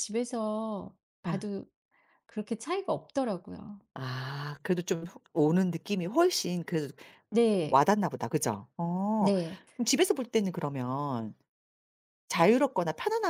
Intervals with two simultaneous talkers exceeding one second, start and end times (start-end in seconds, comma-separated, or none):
none